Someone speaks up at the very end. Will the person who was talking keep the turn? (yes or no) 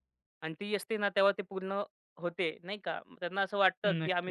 yes